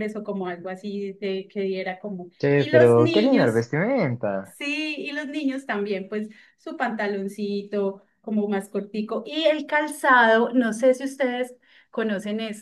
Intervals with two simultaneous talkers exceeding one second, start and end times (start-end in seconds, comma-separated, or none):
2.4-3.7